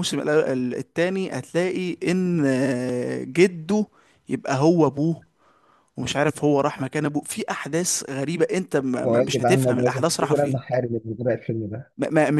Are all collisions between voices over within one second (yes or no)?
no